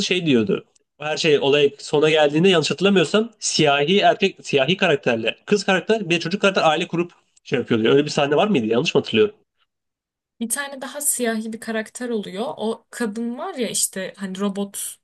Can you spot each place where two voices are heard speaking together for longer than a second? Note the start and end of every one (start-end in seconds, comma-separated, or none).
none